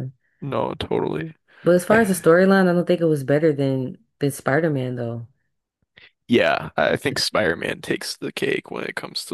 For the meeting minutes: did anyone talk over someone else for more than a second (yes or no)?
no